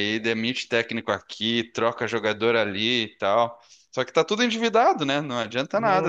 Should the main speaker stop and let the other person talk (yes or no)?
no